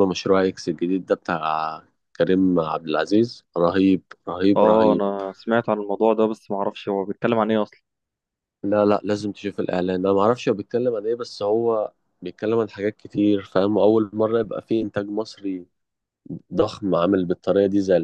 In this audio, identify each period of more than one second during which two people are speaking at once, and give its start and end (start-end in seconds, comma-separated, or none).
none